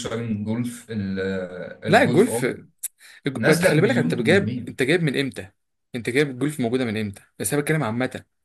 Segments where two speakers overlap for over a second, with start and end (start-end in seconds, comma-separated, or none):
3.3-4.7